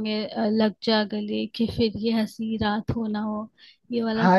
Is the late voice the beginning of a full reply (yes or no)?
yes